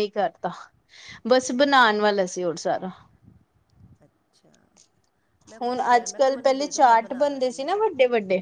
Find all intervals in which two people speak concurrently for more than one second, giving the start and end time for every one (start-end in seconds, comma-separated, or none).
5.6-7.7